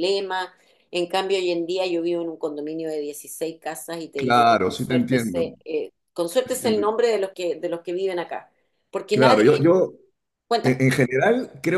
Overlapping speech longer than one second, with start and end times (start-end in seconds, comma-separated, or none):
4.2-5.4